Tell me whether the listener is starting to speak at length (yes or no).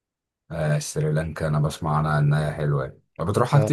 yes